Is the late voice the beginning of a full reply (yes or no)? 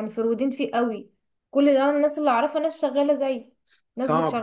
yes